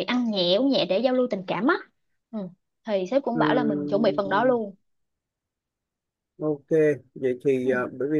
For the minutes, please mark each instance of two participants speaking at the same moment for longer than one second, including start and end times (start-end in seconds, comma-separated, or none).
3.3-4.5